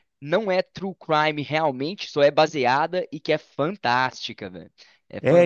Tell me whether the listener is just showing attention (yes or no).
no